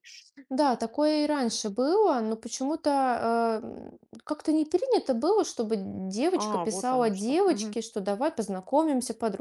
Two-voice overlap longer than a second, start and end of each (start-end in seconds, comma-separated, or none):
6.3-7.8